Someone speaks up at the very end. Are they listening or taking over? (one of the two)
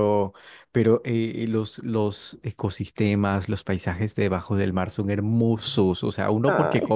listening